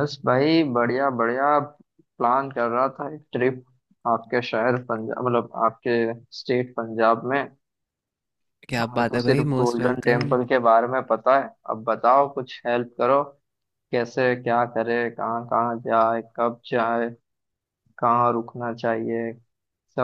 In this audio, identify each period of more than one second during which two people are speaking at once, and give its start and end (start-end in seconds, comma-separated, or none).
8.8-10.3